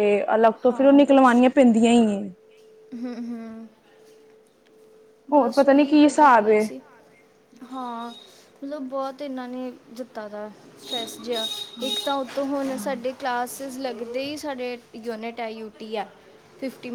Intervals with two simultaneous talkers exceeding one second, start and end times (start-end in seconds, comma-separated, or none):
5.3-6.6